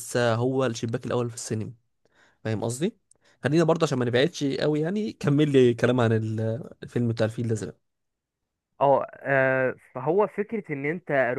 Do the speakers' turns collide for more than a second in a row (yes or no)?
no